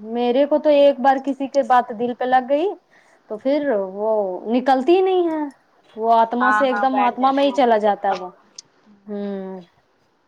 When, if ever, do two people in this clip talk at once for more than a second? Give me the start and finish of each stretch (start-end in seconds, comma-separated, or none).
6.4-8.3